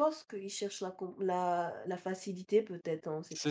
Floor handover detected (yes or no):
yes